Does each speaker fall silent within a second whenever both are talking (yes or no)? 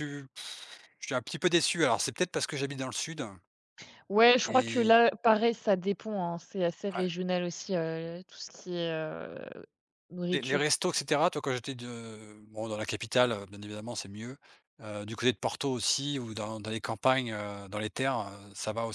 yes